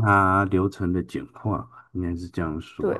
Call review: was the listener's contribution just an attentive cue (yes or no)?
no